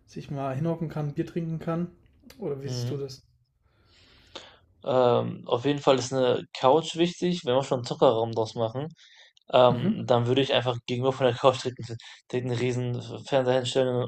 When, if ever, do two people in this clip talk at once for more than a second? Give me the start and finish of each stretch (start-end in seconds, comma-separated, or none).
none